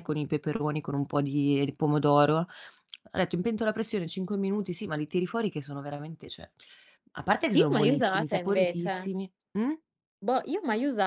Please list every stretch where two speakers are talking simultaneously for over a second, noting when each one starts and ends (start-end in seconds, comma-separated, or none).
7.6-8.9